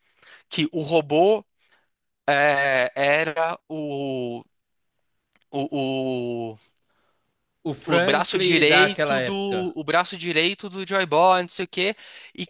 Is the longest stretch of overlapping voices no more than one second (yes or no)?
no